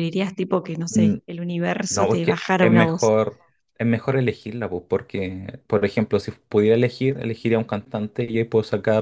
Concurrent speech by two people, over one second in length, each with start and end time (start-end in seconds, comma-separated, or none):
1.9-3.1